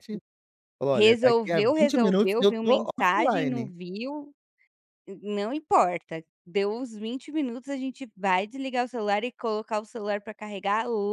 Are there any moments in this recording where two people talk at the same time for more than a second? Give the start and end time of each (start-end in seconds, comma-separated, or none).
0.9-3.7